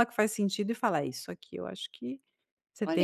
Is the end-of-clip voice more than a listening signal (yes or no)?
yes